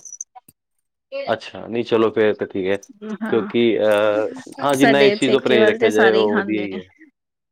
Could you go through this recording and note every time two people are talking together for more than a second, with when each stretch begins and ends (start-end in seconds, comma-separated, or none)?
4.8-6.8